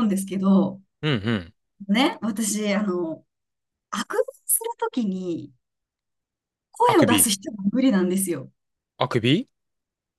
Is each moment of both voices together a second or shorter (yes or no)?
yes